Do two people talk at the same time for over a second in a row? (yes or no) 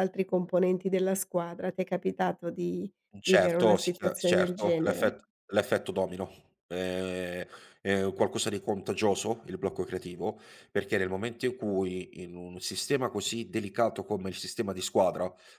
yes